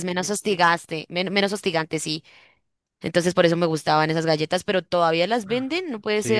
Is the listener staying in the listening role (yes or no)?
no